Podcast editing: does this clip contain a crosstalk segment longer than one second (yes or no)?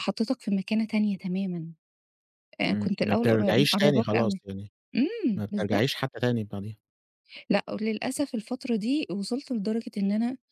yes